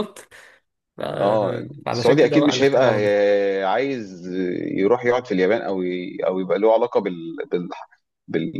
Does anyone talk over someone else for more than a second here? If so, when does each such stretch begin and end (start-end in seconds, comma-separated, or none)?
1.9-3.2